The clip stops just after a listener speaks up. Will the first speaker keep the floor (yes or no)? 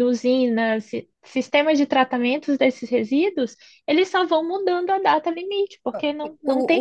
no